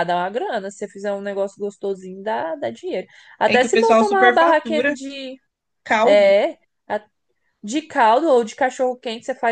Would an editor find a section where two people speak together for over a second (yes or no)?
yes